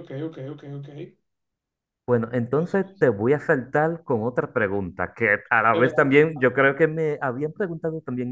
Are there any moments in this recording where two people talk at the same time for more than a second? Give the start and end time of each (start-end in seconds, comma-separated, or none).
none